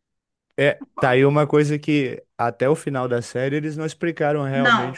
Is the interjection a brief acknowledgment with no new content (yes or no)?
yes